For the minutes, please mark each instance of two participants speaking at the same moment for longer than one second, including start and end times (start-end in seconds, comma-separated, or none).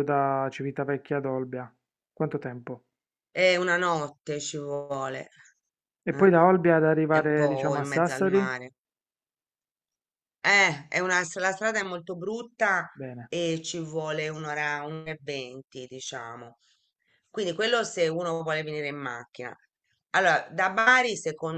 7.1-8.5